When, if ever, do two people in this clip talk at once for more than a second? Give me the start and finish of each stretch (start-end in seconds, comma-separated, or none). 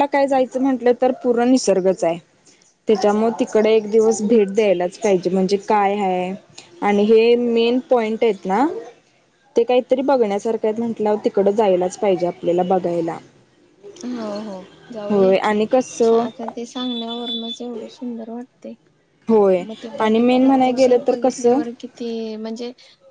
20.0-21.6